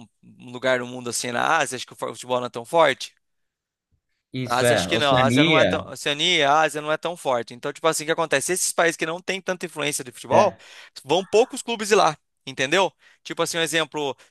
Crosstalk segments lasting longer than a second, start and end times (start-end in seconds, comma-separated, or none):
4.4-5.8